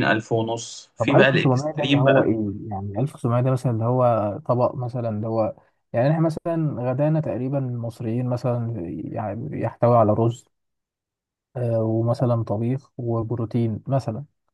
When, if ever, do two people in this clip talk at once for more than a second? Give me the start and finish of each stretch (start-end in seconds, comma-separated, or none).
1.0-2.3